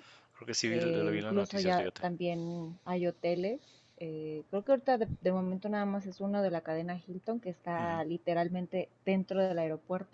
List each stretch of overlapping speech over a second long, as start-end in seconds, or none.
0.7-2.0